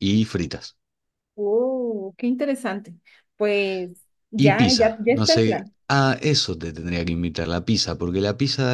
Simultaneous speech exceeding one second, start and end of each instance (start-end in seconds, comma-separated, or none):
4.4-5.7